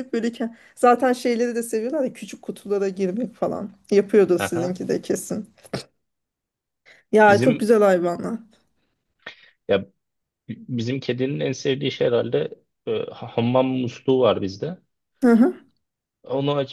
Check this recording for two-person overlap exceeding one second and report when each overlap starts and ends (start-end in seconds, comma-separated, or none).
none